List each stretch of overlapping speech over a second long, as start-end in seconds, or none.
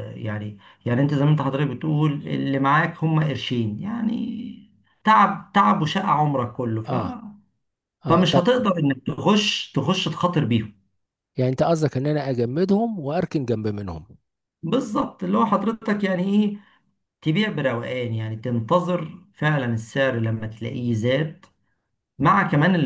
none